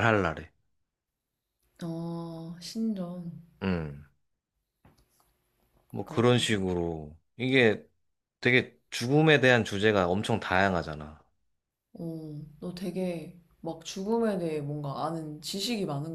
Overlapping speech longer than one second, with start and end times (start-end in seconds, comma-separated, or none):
none